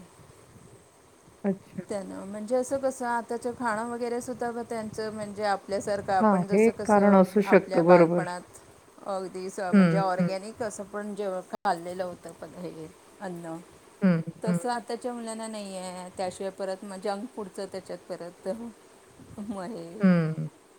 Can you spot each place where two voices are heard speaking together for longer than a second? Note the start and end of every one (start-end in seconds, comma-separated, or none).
6.2-8.2